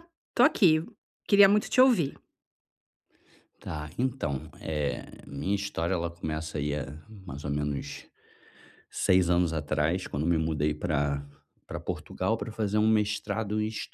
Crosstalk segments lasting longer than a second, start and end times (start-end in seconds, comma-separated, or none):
none